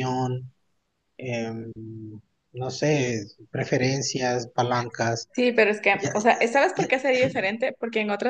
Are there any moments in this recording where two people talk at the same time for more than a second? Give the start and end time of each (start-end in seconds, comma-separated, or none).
none